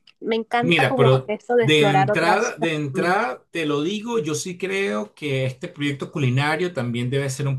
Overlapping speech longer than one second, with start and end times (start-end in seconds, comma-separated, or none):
0.6-3.3